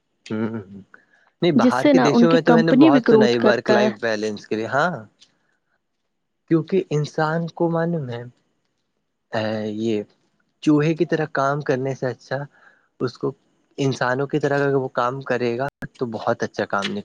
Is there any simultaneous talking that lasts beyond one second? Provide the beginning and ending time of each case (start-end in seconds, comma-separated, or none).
1.8-3.8